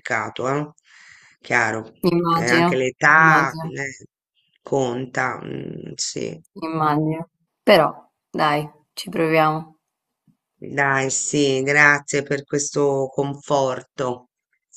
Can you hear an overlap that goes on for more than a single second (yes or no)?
yes